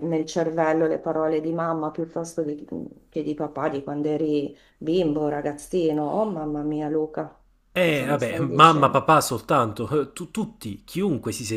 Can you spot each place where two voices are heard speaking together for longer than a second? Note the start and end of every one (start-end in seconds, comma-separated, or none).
7.8-9.0